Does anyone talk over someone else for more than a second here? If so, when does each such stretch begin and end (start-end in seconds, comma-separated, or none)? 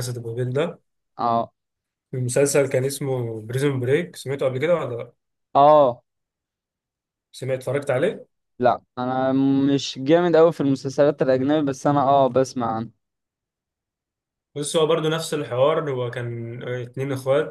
none